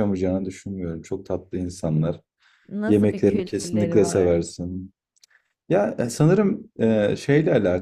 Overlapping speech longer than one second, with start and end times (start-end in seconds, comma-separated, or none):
2.9-4.4